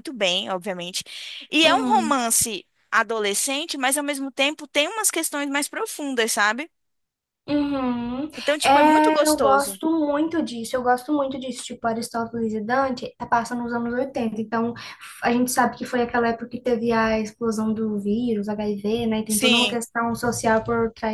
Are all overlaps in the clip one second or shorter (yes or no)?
no